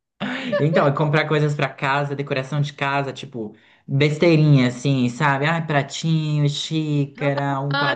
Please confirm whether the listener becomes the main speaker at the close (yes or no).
yes